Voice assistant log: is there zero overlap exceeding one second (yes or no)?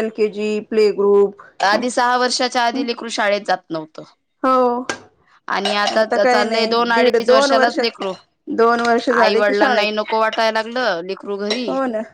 no